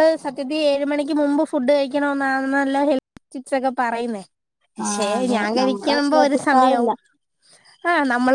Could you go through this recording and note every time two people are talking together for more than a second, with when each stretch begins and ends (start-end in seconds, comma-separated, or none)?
4.9-6.9